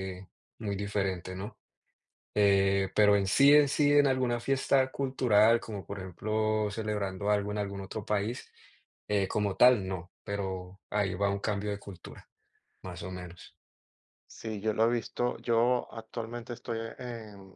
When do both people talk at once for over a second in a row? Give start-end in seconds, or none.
none